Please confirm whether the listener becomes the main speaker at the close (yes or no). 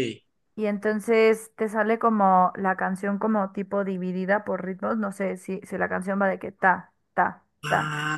yes